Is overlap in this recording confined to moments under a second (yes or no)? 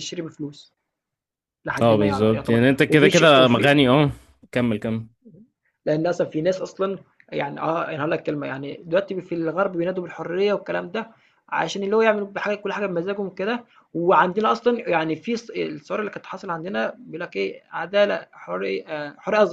no